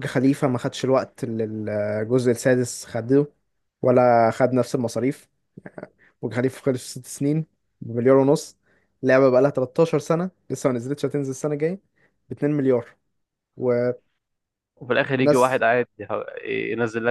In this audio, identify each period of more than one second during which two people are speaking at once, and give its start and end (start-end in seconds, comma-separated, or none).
none